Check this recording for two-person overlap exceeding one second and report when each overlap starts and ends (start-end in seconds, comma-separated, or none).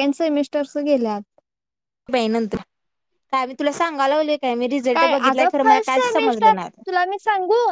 4.9-6.8